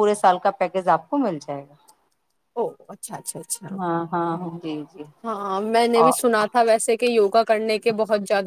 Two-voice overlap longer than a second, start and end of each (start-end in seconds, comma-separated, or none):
none